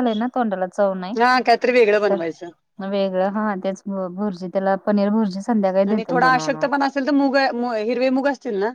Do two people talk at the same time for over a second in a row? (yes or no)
no